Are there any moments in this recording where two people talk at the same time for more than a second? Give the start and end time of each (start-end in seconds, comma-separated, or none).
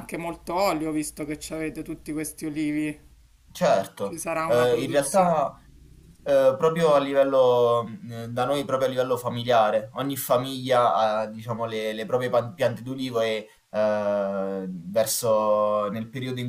4.0-5.5